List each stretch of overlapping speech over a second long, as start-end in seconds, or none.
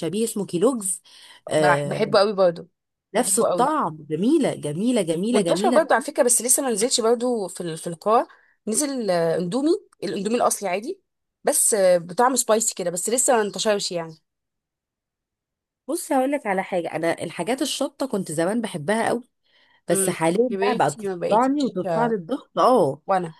19.9-22.2